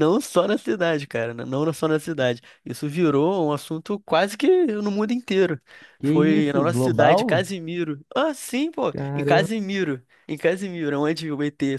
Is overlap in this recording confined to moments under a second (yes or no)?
no